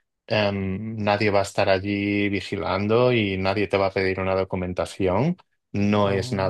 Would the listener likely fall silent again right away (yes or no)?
yes